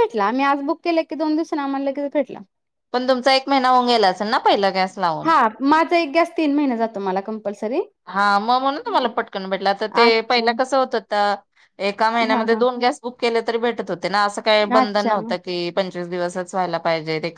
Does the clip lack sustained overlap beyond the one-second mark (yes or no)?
yes